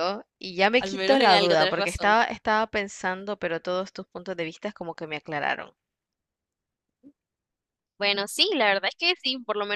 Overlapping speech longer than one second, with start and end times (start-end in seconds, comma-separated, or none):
0.8-2.2